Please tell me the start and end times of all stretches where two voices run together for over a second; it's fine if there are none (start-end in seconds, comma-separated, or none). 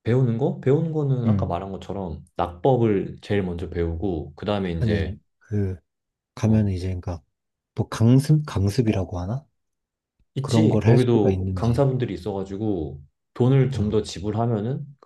10.4-11.8